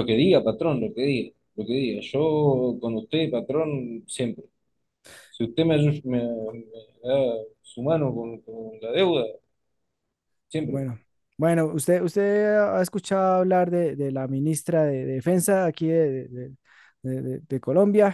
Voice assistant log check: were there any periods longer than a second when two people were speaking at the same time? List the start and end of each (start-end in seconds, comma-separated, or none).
none